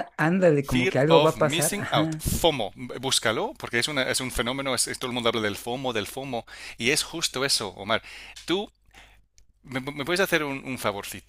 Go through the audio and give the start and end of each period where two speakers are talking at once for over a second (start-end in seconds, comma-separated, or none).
0.6-2.3